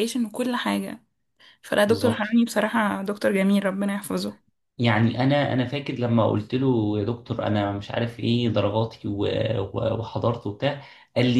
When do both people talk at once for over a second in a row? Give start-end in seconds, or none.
none